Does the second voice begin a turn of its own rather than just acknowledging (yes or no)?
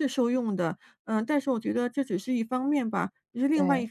no